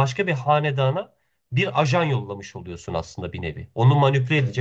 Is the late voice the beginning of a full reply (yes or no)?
no